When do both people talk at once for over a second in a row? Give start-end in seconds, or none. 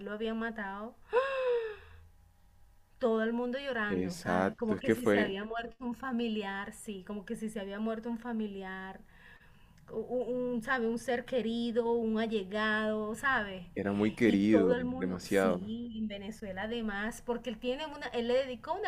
3.9-5.3, 14.2-15.7